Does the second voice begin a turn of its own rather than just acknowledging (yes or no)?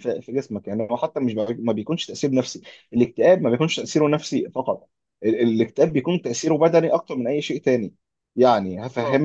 no